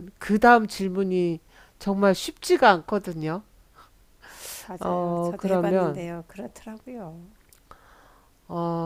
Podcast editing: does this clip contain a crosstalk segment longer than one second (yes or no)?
yes